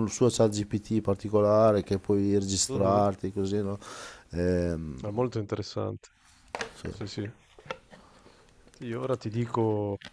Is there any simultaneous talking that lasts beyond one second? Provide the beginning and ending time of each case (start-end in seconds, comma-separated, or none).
none